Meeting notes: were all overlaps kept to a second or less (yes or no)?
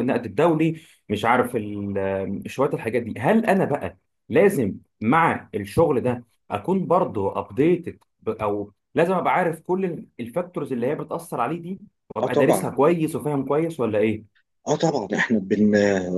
yes